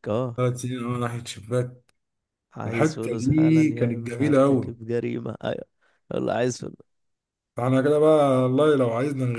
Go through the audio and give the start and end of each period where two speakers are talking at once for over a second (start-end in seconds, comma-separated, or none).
2.6-4.8